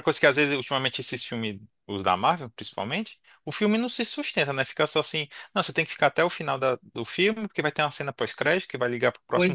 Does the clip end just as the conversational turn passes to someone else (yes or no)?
no